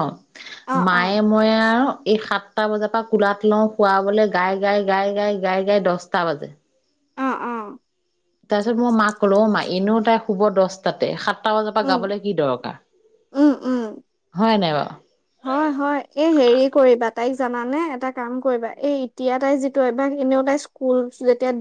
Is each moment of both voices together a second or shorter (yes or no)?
yes